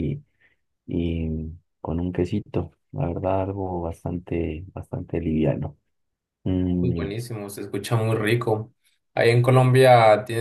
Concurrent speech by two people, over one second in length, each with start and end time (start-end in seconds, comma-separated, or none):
none